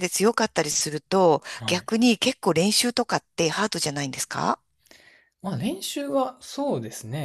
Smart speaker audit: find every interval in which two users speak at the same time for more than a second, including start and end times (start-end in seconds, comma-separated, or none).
none